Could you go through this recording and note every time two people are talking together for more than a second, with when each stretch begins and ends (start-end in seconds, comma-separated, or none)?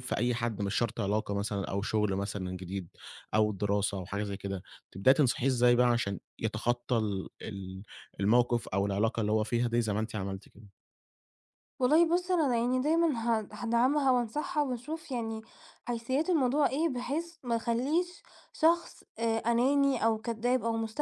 none